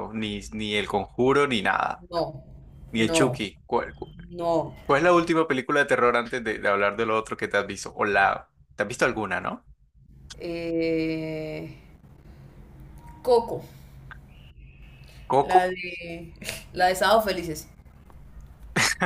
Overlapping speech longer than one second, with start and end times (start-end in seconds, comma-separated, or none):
none